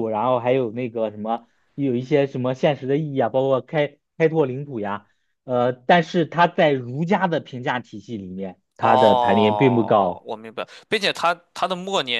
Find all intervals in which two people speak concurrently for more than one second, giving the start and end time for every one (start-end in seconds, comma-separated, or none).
8.8-10.3